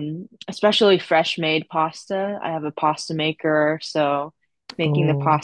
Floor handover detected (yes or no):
no